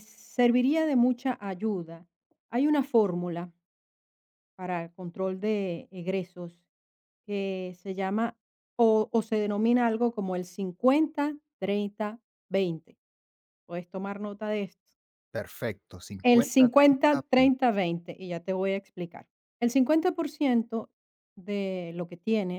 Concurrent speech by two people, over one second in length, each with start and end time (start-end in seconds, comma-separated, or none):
16.2-17.6